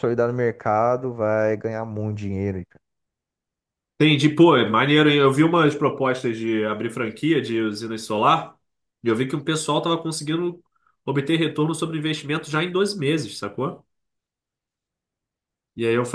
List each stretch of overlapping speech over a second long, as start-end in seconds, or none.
none